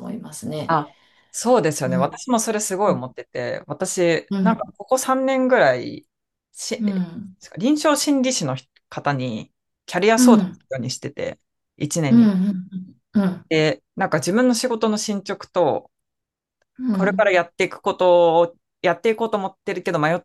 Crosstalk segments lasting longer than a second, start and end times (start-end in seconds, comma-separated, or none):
none